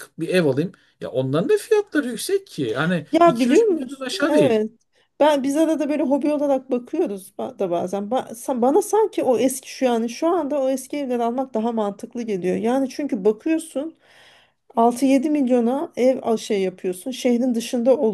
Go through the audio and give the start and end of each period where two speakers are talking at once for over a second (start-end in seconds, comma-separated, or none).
3.1-4.6